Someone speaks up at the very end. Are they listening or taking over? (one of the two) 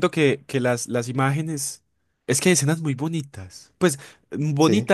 listening